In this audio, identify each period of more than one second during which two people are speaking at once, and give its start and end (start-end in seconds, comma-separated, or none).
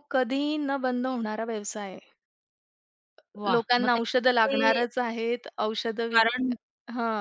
3.5-4.8